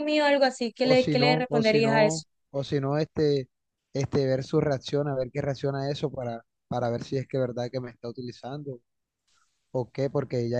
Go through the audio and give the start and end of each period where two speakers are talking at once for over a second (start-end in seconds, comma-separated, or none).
0.8-2.2